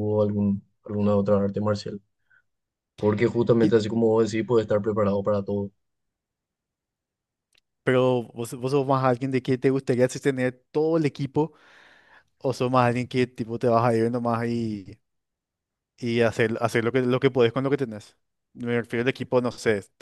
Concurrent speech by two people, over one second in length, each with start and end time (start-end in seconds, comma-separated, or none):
none